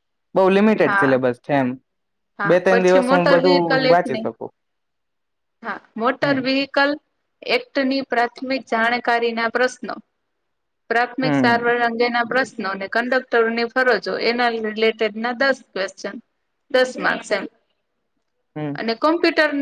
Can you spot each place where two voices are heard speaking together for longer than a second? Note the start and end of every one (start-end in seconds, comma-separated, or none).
2.5-4.2